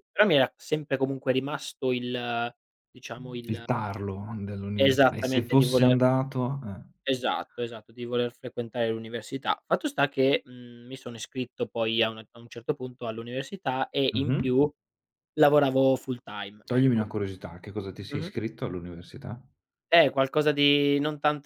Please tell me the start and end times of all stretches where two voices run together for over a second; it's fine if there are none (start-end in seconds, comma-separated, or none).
4.8-6.0